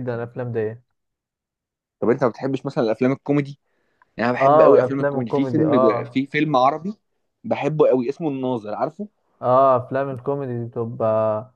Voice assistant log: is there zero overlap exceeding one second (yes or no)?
no